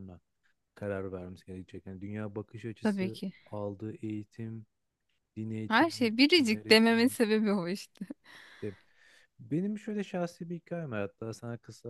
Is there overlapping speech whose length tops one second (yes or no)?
yes